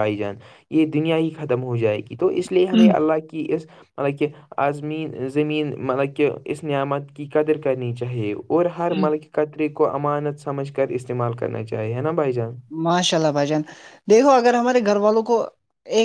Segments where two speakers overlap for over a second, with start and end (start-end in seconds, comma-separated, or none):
none